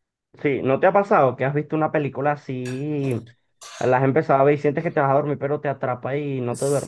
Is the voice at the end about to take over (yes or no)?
yes